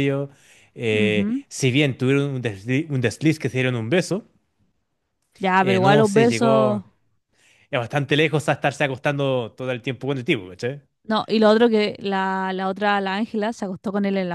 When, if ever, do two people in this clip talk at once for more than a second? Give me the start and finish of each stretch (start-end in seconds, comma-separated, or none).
5.6-6.8